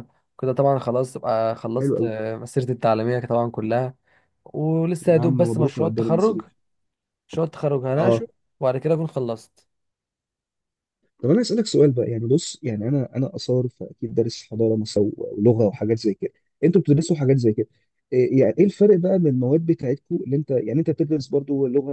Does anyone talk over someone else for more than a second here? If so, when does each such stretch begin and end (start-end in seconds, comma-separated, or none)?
5.1-6.4